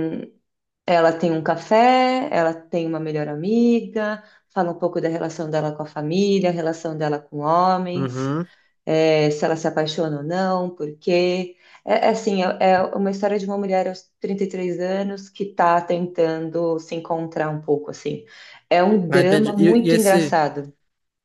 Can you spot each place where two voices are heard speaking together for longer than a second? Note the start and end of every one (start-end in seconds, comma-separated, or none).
19.1-20.4